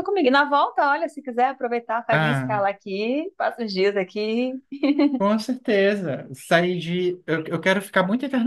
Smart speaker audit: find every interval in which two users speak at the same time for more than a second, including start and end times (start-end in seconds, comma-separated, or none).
none